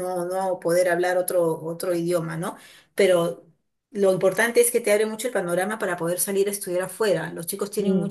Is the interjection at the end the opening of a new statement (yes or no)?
no